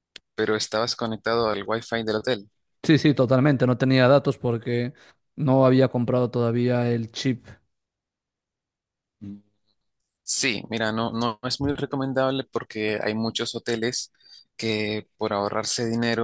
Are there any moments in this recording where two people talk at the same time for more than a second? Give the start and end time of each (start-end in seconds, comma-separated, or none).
none